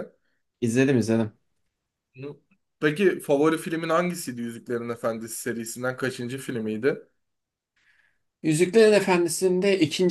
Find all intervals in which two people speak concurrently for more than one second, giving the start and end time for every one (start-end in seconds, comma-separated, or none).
none